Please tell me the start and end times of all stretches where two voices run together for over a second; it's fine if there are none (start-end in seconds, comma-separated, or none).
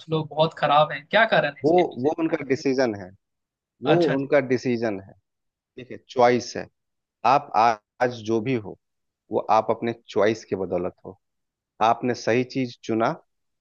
none